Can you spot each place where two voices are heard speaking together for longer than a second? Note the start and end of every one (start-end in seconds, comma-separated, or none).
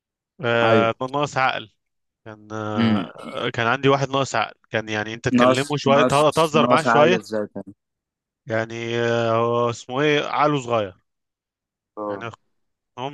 5.4-7.2